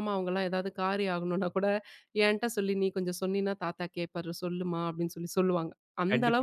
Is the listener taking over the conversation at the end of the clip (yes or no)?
yes